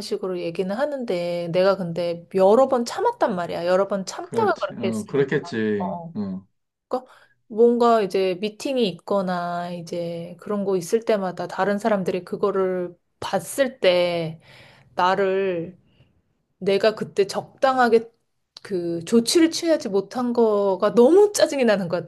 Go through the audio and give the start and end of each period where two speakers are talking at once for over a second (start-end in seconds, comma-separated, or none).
4.2-6.1